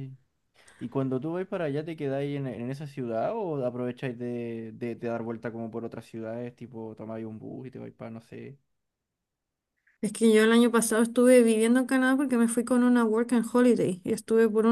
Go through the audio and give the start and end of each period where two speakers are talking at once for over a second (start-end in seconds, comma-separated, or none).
none